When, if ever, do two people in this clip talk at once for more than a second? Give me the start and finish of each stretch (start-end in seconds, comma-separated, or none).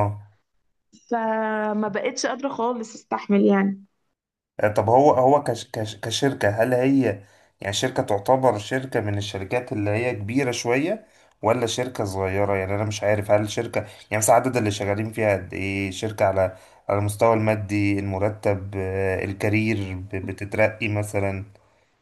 none